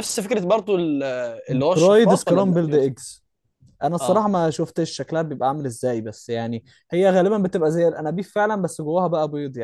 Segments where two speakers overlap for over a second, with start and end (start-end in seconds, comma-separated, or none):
1.5-2.9